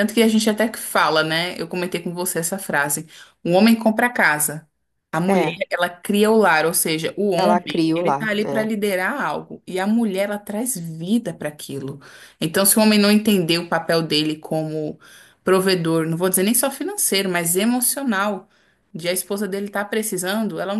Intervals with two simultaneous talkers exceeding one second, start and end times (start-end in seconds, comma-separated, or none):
7.3-8.7